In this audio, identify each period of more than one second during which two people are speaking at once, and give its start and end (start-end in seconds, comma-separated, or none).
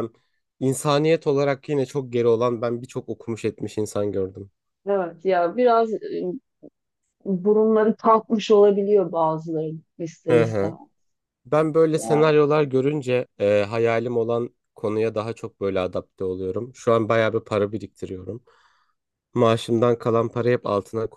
none